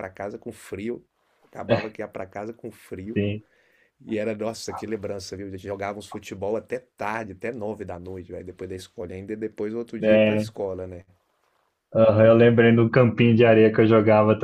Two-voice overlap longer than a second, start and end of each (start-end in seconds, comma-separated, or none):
none